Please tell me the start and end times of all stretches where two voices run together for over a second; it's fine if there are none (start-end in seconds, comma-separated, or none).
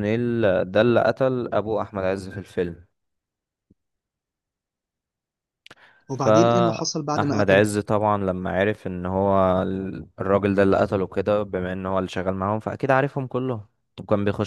6.2-7.6